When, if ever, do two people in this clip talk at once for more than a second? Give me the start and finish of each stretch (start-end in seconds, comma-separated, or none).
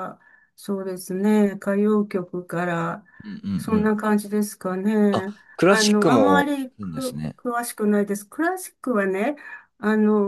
5.1-7.4